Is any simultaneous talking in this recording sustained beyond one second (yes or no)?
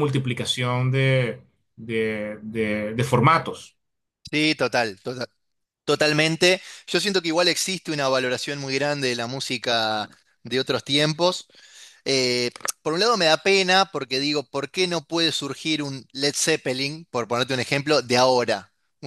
no